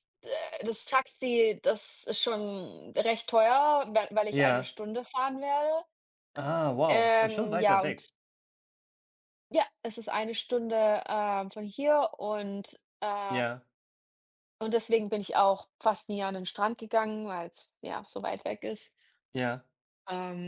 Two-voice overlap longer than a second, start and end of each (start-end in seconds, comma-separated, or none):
6.9-8.1